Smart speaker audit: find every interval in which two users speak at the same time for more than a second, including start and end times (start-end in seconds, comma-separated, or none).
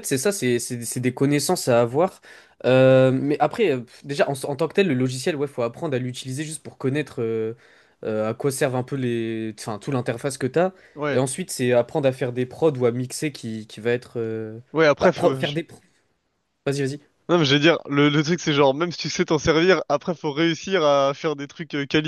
none